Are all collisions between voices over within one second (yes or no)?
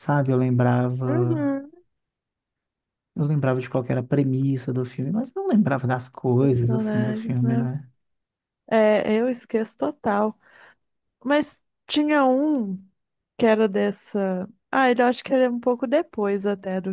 no